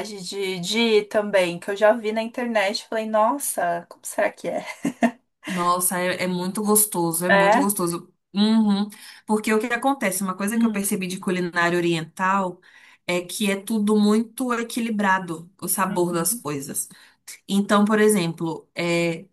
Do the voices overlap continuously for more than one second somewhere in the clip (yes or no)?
no